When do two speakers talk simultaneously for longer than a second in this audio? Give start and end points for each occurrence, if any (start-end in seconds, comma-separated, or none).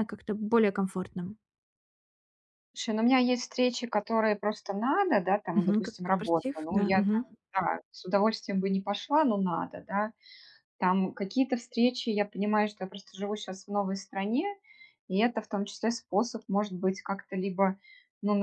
5.5-7.2